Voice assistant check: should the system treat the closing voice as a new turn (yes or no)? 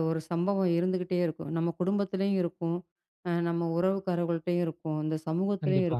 no